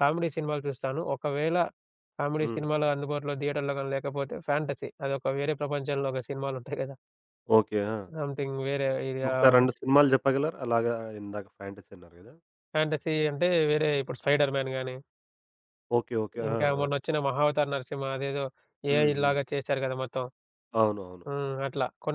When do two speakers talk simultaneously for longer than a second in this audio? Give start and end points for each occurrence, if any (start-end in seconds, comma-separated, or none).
none